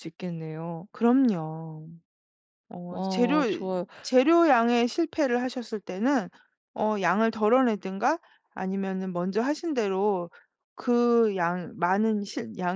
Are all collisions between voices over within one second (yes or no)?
yes